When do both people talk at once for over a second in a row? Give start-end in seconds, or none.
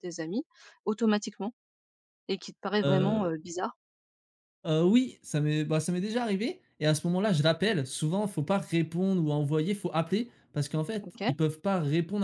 none